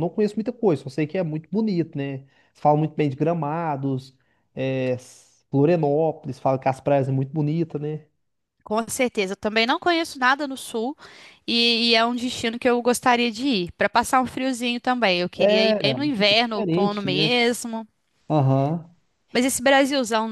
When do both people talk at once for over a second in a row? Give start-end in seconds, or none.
15.4-17.3